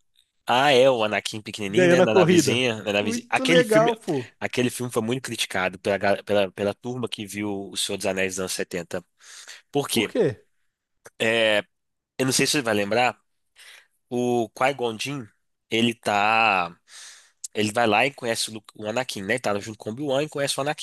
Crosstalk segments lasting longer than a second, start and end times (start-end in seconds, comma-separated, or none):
1.7-3.9